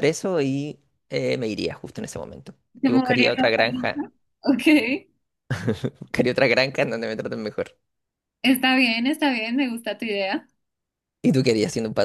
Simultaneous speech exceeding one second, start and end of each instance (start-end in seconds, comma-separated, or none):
2.8-4.1